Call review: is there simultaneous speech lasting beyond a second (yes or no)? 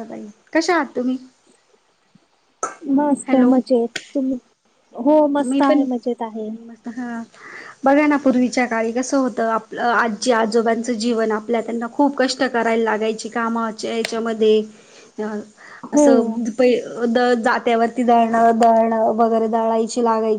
no